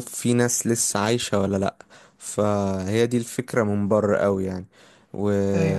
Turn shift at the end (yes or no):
no